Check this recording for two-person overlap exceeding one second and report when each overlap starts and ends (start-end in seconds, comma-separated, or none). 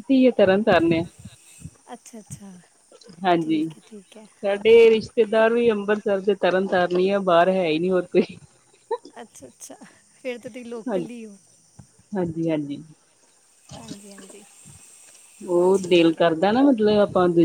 none